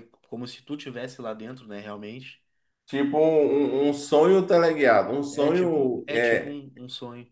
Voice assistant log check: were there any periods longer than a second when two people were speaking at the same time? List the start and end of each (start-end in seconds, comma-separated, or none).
5.3-6.5